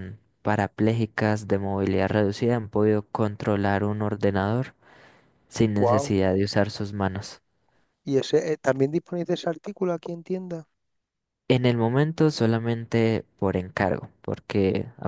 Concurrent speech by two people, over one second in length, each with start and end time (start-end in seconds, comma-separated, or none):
none